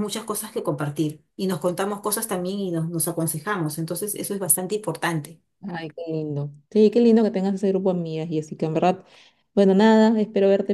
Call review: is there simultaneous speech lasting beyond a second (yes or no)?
no